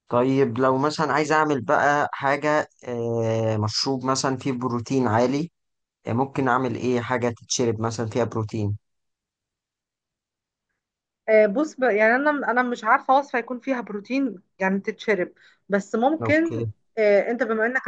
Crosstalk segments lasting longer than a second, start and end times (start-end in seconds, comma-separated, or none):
none